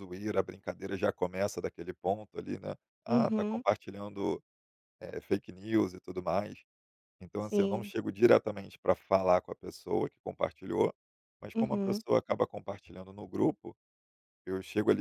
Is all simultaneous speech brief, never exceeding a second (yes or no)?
yes